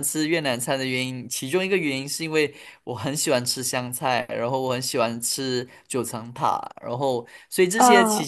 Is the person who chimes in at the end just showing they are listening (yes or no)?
yes